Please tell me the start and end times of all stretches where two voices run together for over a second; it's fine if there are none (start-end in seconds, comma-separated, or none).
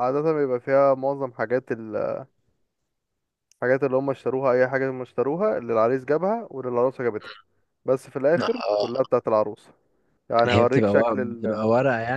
10.5-11.7